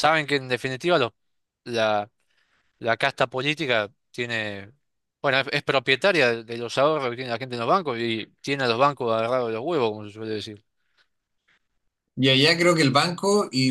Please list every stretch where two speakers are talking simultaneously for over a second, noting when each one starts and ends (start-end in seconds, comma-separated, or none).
none